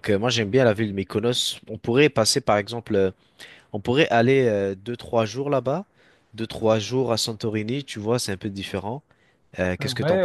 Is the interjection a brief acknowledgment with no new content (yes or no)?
no